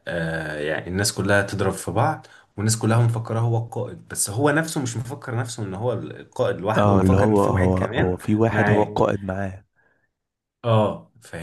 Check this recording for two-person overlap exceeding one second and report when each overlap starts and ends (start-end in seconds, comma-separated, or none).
6.8-8.9